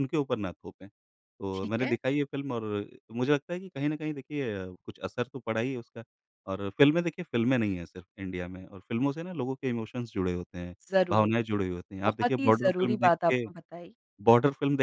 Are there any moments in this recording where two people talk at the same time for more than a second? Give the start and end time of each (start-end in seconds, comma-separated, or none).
12.0-13.4